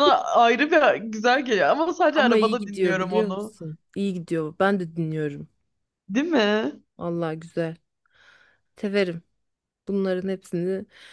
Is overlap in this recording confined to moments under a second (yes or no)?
no